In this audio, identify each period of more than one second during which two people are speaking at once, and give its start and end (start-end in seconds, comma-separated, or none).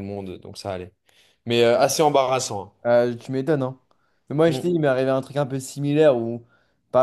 none